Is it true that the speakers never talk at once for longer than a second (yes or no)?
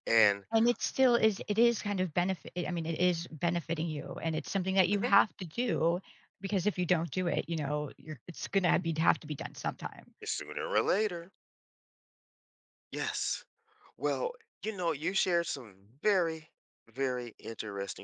yes